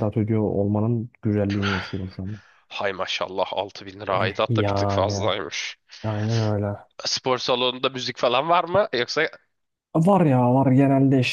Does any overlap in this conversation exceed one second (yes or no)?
yes